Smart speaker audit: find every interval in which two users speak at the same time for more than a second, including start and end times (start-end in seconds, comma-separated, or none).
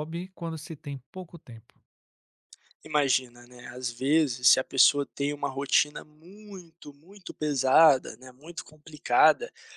none